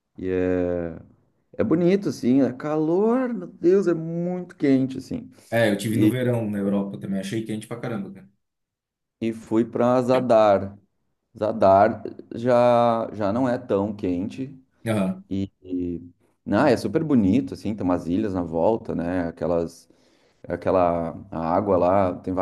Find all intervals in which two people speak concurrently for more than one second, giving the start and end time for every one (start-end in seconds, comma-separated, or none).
none